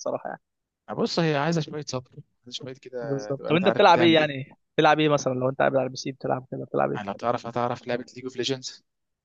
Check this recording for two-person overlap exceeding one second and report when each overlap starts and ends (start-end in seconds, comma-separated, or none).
3.0-4.5